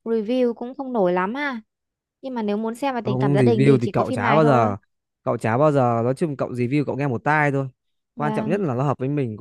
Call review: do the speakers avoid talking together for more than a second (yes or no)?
no